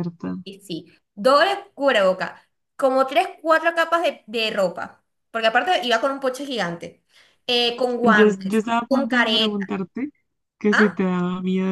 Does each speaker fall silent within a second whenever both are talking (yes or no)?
no